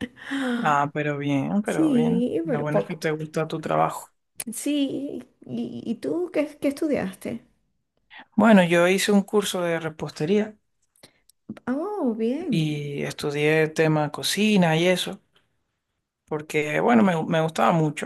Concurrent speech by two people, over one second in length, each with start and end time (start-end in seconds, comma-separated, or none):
1.6-3.1